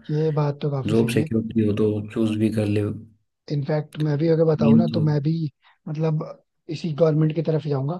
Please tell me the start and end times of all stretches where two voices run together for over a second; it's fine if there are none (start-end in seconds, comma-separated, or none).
none